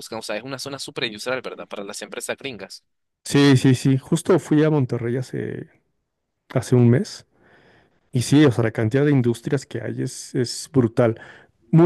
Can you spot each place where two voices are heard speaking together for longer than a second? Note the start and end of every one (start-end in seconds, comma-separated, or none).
none